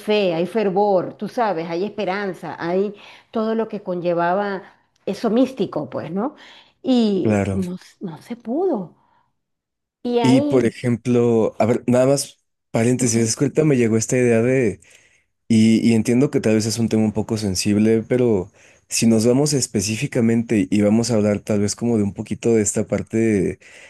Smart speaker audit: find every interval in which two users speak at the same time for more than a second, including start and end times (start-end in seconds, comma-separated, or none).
none